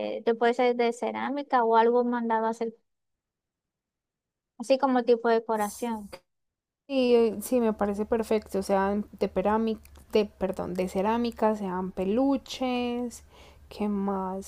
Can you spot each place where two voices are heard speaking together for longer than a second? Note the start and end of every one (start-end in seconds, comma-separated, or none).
none